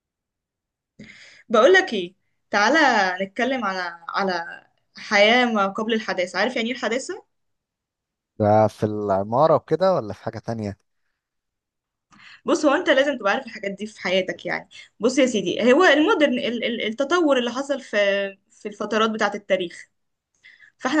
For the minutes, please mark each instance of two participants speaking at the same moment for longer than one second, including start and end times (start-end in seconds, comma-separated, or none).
none